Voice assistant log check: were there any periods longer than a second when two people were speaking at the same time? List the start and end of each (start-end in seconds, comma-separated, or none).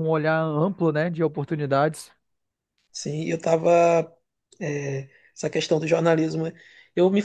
none